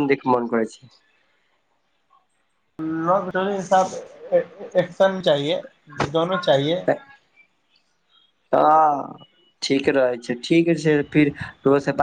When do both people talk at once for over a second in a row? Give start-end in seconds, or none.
none